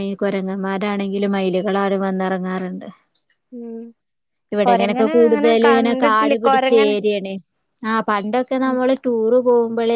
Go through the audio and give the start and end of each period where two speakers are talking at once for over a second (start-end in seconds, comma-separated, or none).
4.7-6.9